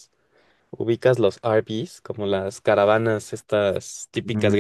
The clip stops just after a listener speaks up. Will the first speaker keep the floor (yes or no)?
no